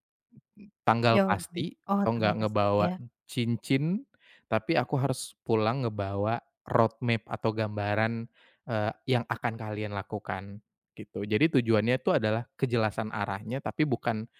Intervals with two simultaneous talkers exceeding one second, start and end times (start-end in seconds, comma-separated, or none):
1.1-2.9